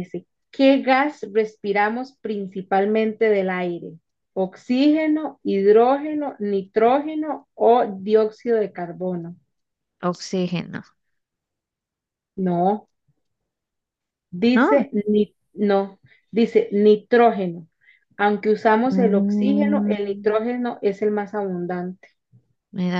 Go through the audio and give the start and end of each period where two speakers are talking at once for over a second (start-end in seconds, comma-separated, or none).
18.9-20.3